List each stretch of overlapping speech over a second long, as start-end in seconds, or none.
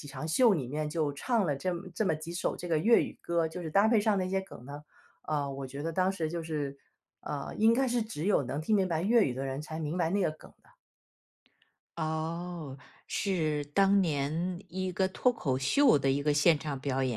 none